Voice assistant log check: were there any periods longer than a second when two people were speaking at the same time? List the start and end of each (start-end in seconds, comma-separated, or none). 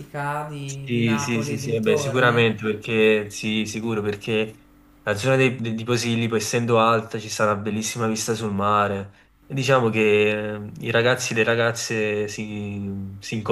0.6-2.5